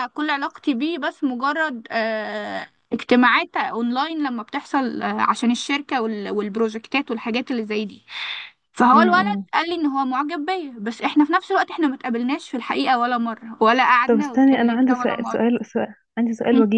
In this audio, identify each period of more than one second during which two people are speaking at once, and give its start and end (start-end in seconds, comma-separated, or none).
14.1-15.4